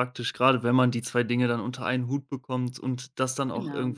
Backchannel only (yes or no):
yes